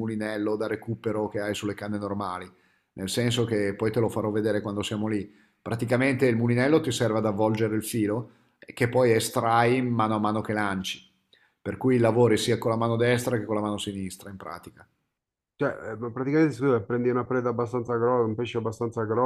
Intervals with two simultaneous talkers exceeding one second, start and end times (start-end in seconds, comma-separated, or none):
none